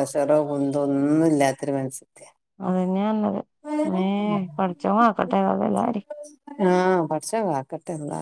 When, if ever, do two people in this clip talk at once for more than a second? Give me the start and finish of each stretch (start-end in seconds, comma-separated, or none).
none